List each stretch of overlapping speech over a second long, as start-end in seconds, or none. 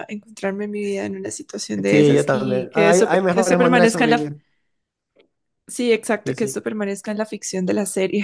1.9-4.3